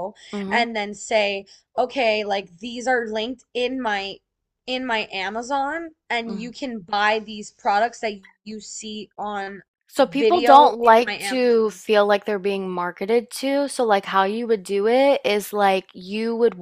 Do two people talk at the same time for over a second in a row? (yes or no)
yes